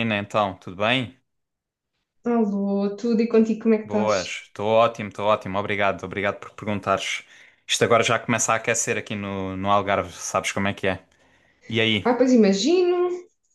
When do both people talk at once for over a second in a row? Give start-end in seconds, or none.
none